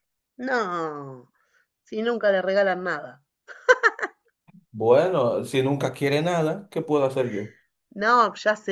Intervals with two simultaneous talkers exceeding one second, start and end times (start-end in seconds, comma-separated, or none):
none